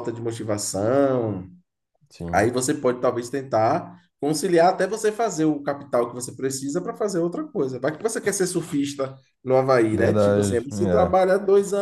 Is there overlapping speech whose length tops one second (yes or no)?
yes